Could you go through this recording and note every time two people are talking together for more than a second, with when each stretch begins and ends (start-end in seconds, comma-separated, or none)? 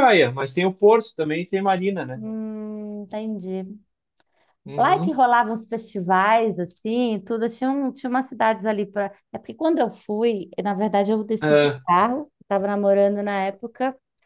none